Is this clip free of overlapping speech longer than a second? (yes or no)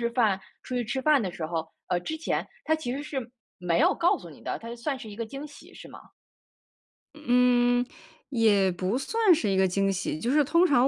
yes